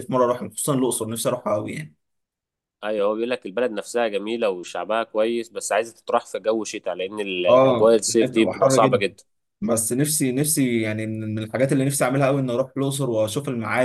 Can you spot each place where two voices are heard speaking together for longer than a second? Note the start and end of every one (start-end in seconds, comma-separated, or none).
7.5-9.0